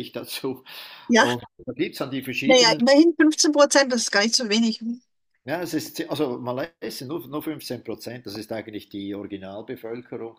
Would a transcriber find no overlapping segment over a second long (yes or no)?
yes